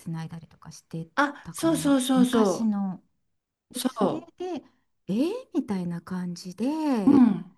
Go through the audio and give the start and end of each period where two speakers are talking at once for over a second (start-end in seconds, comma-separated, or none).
1.1-2.8